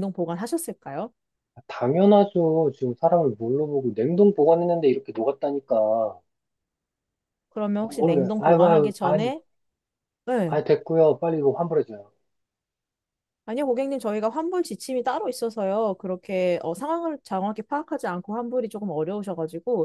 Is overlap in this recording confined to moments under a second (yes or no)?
no